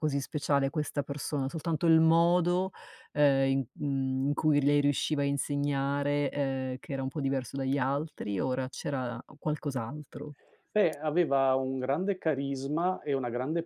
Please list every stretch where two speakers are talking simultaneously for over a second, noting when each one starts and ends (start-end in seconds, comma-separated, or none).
none